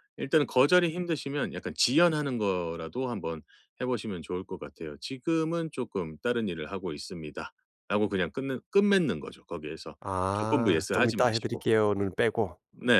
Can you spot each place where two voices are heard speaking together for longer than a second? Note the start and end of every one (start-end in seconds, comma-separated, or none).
10.3-11.7